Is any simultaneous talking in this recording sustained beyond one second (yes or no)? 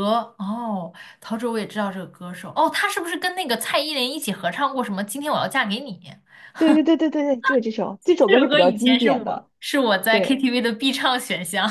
yes